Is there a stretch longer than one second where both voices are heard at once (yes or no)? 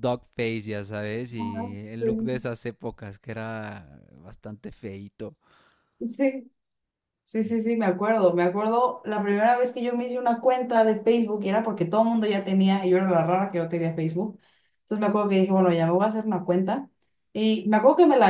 no